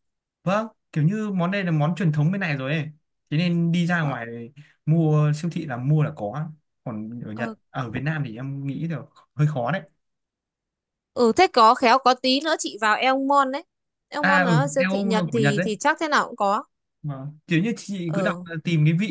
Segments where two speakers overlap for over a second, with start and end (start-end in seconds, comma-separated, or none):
14.2-15.7